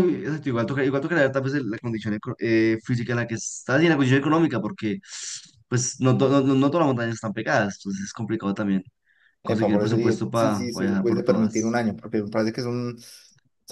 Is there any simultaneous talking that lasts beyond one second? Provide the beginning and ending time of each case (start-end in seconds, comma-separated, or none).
9.4-11.8